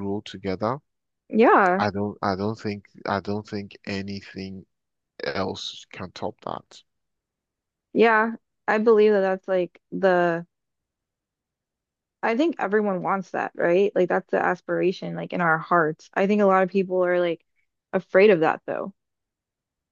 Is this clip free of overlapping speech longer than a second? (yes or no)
yes